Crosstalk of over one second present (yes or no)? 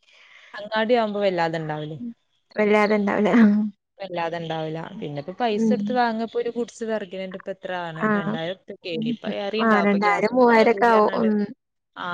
yes